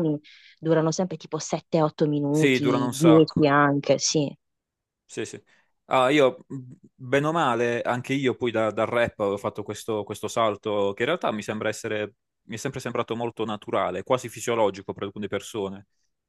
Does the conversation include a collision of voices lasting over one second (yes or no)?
yes